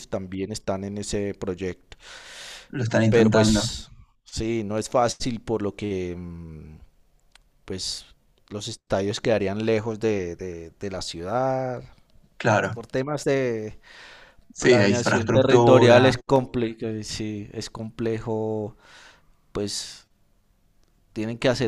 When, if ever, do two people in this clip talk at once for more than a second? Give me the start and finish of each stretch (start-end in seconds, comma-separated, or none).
14.6-16.1